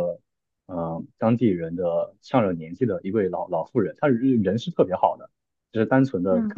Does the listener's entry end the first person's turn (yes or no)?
no